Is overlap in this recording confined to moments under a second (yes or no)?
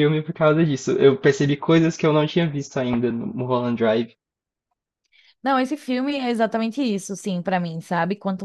yes